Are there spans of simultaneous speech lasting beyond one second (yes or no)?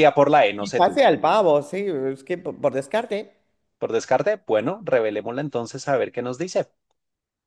no